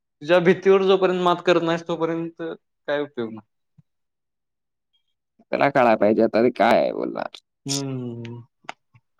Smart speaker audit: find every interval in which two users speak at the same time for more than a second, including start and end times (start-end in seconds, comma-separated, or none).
none